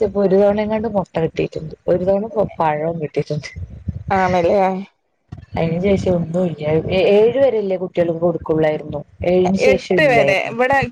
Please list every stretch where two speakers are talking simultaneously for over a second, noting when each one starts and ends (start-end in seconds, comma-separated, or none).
none